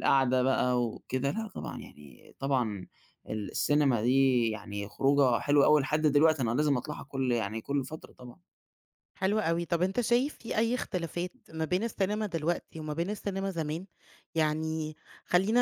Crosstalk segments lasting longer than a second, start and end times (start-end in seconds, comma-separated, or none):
none